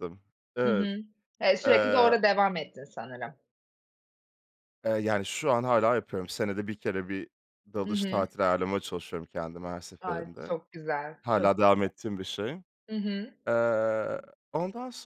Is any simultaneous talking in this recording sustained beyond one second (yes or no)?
no